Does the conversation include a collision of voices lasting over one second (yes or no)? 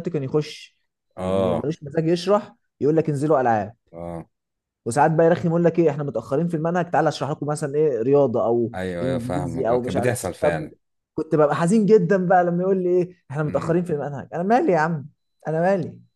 yes